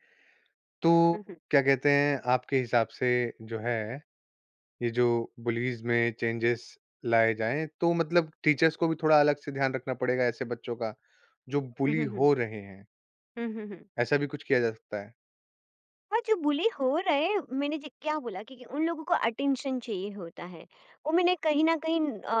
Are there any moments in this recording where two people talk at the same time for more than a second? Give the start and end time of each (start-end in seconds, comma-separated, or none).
none